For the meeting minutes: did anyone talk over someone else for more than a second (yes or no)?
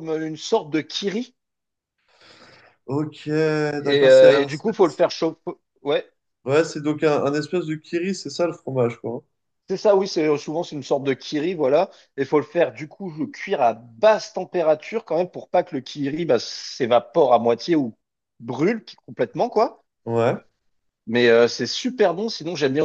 yes